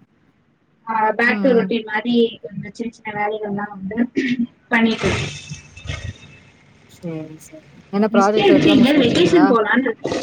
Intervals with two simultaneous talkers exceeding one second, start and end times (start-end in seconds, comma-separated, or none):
8.1-9.5